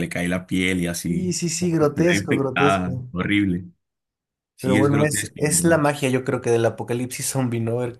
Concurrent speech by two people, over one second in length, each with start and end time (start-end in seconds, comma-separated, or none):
1.1-3.1, 4.6-5.9